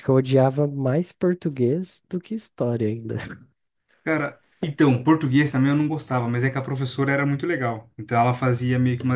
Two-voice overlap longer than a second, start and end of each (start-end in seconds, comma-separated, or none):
none